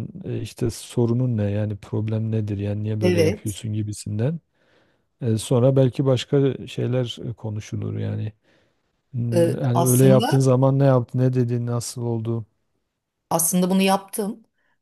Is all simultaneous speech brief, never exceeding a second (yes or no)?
no